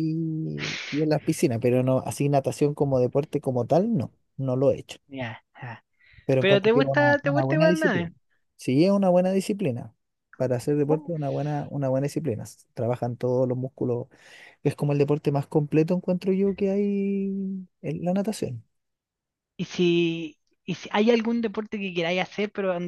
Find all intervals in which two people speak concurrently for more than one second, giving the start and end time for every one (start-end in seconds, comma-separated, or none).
6.4-8.1